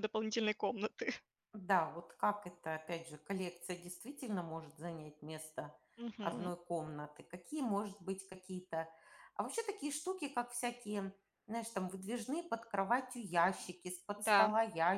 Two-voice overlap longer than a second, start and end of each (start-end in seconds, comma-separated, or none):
none